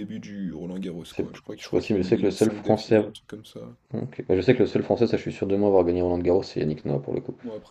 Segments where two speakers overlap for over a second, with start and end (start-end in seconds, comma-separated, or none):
1.1-3.0